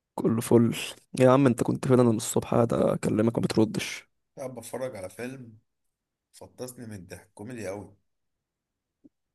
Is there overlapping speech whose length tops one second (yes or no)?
no